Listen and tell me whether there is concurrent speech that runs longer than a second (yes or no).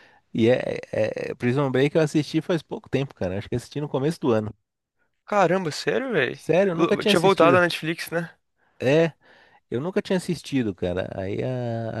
no